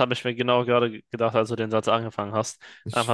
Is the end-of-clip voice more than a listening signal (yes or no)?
no